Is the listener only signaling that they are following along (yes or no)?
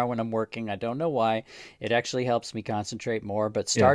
yes